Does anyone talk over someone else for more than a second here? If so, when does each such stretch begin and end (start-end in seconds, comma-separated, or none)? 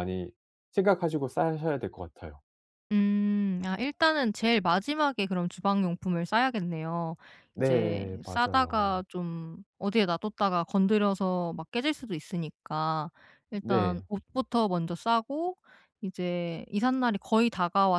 7.6-9.0